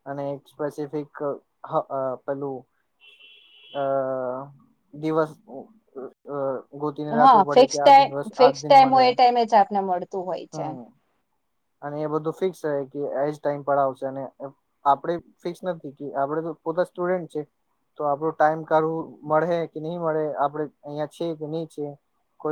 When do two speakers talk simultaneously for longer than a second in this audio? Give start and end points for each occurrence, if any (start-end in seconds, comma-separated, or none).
7.2-9.0